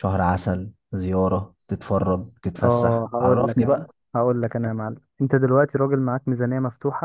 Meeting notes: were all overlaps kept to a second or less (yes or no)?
no